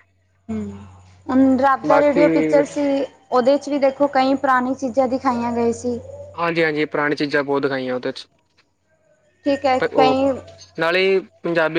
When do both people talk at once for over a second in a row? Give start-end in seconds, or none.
none